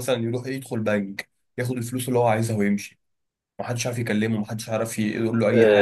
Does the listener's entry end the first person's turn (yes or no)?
yes